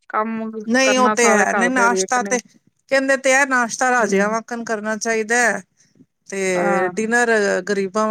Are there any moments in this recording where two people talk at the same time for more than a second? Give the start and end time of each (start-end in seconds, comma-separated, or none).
0.7-2.3